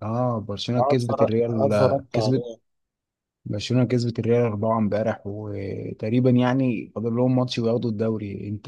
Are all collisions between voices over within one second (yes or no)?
no